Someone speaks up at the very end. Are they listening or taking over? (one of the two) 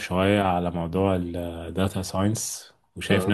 listening